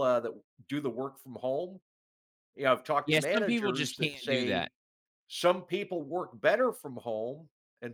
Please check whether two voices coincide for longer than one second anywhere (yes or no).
yes